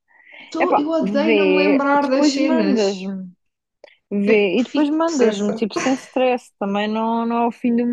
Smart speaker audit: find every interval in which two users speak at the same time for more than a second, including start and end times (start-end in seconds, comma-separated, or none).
0.6-2.9, 4.3-5.7